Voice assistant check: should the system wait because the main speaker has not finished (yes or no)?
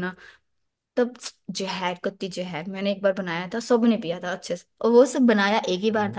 yes